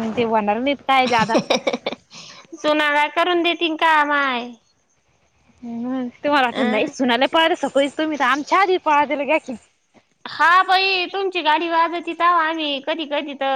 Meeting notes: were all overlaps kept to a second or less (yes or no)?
yes